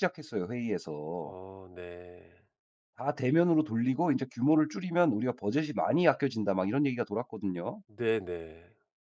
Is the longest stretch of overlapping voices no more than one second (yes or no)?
yes